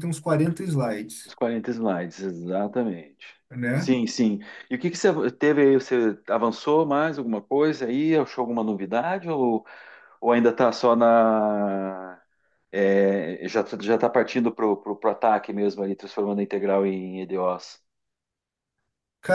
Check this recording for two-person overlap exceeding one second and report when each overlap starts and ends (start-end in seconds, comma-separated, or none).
none